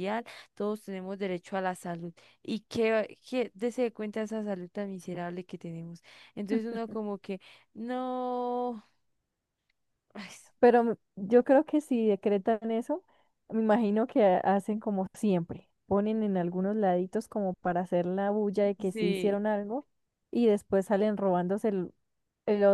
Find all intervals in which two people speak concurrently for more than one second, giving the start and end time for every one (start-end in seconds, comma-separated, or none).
none